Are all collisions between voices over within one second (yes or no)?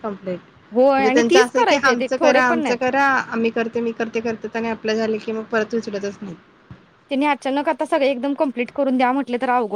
no